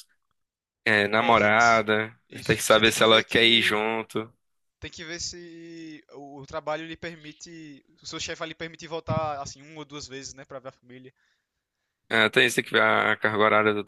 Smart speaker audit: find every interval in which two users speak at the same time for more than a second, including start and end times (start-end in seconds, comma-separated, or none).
2.3-3.8